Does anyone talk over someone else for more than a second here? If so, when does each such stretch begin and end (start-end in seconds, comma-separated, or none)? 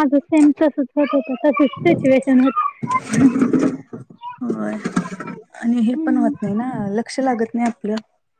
none